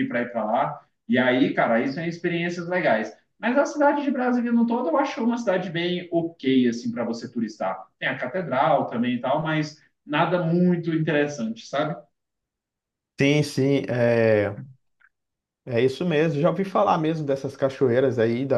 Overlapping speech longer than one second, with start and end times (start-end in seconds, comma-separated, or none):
none